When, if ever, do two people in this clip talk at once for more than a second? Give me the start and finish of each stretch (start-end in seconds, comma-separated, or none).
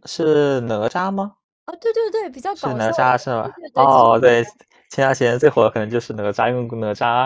2.5-4.1